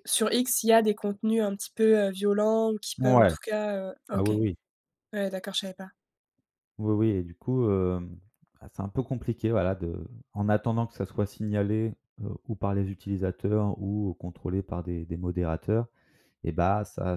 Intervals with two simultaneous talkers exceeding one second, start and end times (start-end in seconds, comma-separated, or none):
none